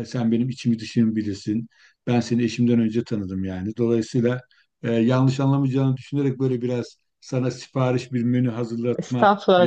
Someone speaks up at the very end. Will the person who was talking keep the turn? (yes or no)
no